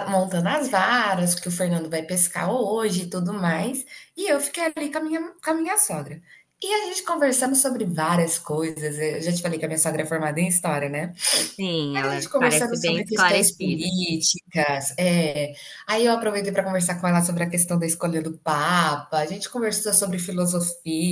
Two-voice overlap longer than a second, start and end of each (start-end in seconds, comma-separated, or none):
11.9-13.9